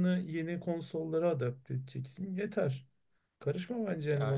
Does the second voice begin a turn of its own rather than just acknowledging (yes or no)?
yes